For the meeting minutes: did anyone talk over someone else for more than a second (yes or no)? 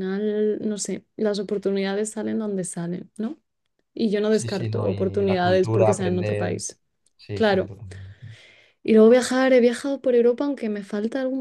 yes